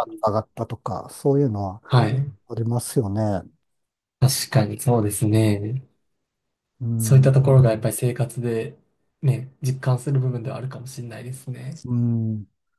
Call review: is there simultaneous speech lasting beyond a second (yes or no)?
no